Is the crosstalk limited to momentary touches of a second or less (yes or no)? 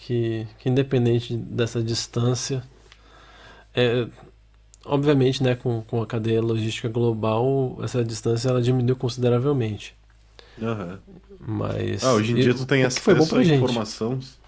no